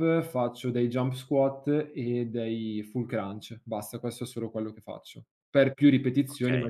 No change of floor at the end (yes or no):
yes